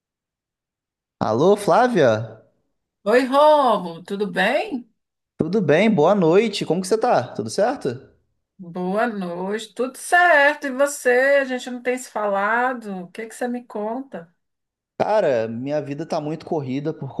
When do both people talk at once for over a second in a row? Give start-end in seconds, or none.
none